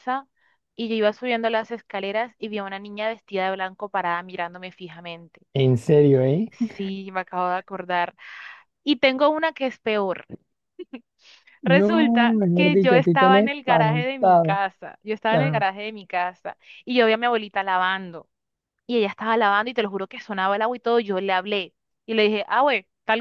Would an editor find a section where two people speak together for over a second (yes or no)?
yes